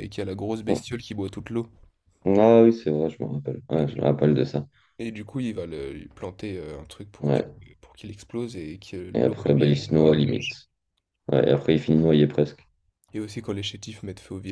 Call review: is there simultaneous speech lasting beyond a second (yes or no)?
yes